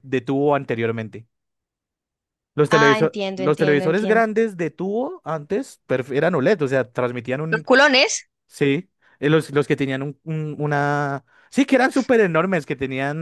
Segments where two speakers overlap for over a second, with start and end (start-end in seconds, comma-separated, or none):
2.7-4.3